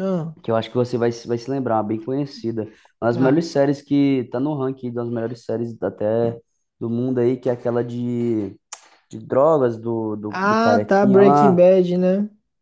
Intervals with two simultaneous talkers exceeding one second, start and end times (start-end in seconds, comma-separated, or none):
10.3-11.7